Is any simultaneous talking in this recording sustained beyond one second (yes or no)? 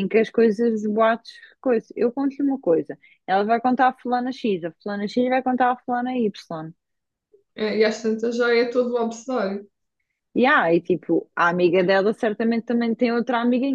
no